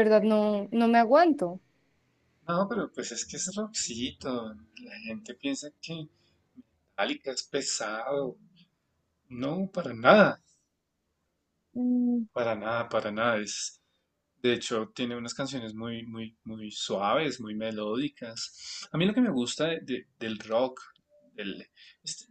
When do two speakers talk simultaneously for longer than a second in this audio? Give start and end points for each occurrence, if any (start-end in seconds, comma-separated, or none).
none